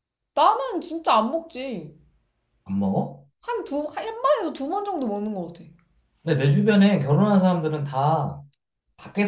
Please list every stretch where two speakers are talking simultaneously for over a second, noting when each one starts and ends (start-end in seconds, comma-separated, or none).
none